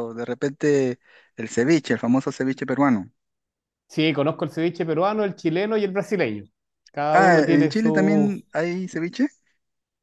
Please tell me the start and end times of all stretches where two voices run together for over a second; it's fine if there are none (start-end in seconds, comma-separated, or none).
7.1-8.3